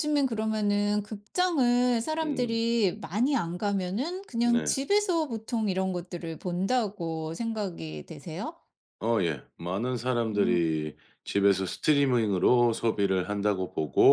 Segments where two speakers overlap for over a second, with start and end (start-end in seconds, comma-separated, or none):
none